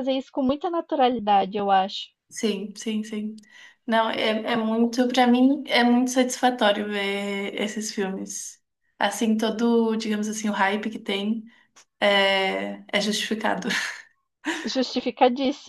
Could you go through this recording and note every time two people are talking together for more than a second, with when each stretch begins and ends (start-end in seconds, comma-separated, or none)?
none